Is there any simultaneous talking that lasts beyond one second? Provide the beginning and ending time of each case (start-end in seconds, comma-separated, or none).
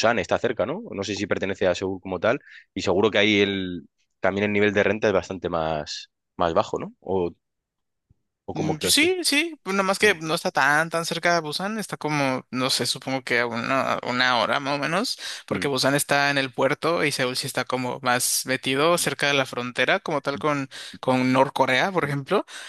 none